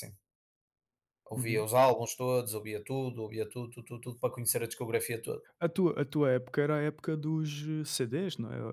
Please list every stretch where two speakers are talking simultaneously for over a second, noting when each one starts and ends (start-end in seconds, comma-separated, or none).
none